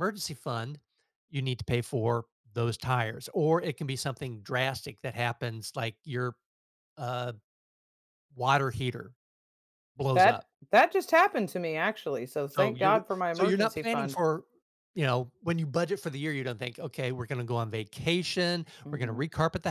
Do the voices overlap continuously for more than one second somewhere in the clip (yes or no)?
yes